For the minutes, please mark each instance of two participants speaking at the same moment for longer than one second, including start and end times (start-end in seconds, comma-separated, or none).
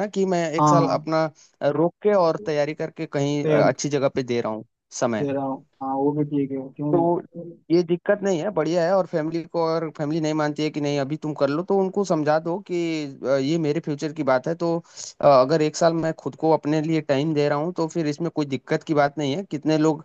none